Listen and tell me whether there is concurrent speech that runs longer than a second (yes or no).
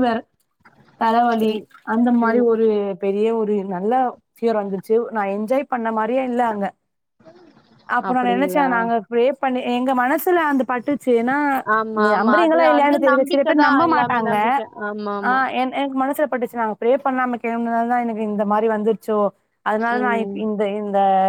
yes